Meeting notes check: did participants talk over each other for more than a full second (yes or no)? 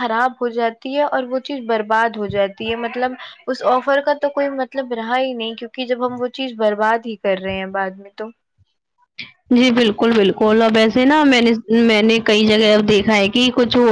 no